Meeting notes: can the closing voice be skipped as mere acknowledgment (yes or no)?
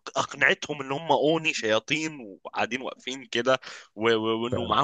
yes